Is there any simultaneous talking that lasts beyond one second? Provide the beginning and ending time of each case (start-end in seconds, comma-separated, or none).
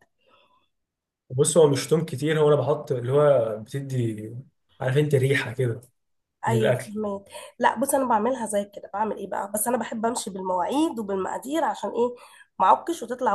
none